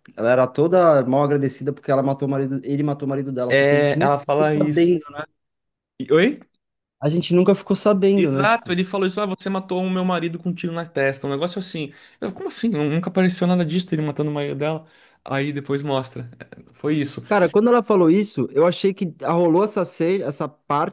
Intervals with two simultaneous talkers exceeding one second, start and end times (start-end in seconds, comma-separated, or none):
3.5-5.0